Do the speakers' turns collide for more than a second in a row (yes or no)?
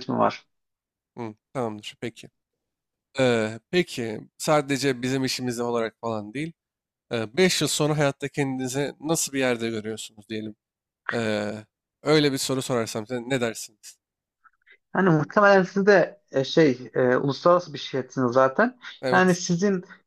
no